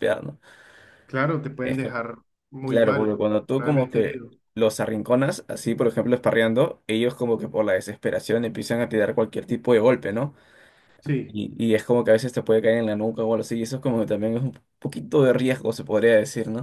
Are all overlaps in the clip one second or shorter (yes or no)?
no